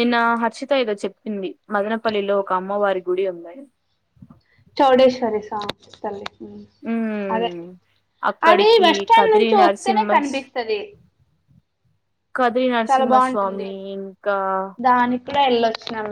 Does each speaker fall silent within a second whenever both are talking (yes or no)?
no